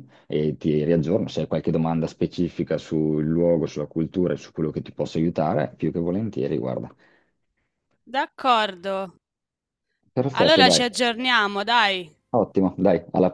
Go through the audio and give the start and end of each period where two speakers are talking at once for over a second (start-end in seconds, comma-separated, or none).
none